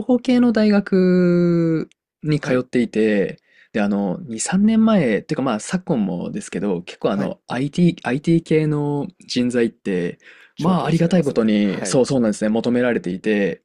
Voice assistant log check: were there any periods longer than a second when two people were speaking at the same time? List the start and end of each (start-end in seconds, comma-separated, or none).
10.6-12.0